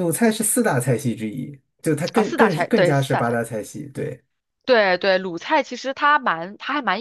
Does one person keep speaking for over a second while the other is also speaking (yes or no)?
yes